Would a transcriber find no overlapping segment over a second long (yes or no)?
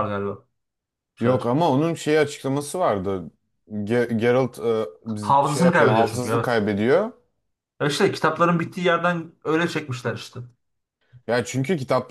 no